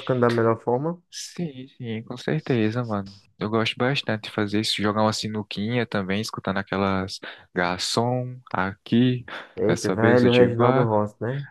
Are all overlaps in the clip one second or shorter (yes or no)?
no